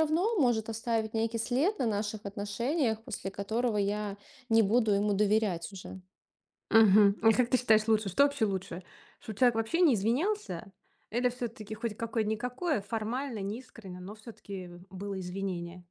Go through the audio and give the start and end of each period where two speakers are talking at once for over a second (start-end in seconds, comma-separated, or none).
none